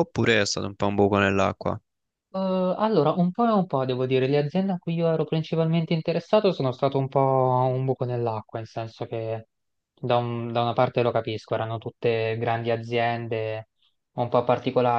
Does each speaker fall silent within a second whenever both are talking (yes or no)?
yes